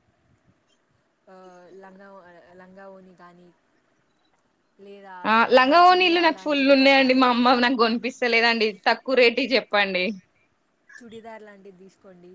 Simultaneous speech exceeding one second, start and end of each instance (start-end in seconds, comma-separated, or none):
5.5-7.1